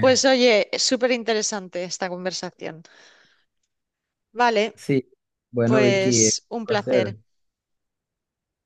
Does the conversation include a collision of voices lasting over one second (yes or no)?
yes